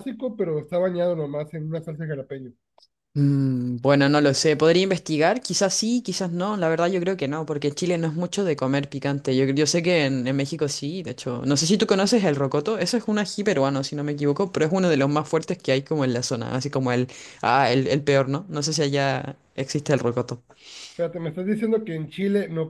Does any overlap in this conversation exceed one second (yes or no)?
no